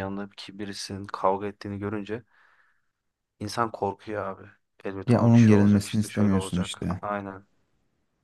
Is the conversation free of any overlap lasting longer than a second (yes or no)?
no